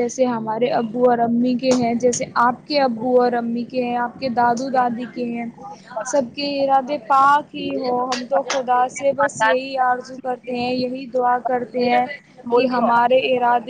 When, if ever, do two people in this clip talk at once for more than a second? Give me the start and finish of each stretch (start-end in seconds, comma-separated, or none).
9.2-10.7